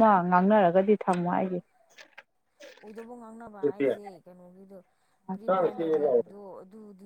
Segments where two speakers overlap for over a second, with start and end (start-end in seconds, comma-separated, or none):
none